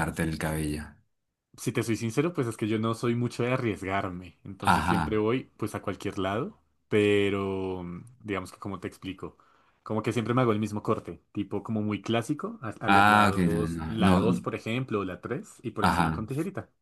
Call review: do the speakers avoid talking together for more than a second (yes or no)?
no